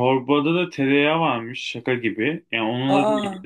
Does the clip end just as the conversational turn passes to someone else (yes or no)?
no